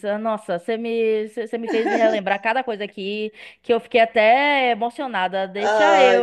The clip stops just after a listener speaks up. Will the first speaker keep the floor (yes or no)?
no